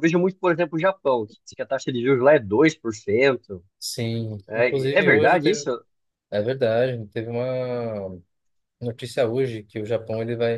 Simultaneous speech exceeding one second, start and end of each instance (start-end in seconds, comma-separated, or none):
4.5-5.7